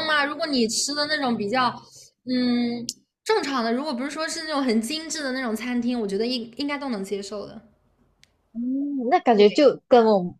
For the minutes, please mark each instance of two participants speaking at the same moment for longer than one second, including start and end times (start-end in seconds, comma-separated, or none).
none